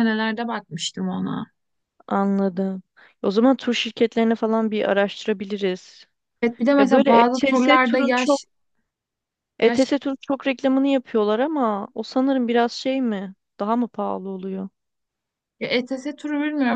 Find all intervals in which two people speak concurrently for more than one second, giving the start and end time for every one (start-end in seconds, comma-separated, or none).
6.8-8.4